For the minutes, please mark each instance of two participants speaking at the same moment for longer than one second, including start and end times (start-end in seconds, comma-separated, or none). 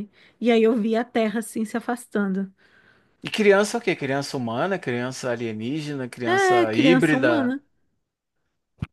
6.2-7.5